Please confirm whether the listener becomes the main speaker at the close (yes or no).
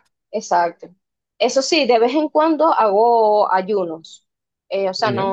no